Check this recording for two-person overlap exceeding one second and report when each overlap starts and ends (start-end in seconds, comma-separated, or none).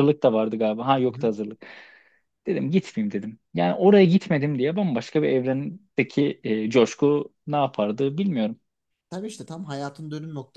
none